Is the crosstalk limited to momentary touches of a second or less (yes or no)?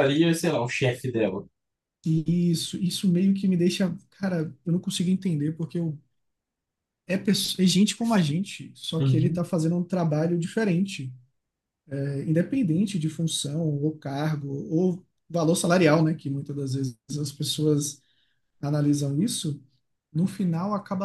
yes